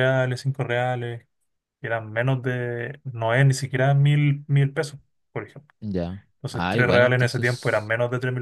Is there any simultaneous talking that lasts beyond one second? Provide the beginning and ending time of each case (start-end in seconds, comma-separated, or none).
6.3-7.9